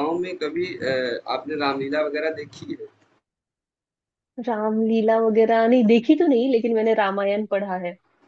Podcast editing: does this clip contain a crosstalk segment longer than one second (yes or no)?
no